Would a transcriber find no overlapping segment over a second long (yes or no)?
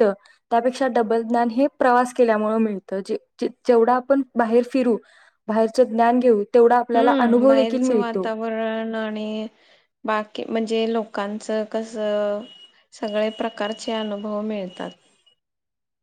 no